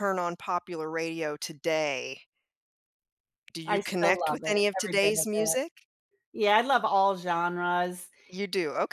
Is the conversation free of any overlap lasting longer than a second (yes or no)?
no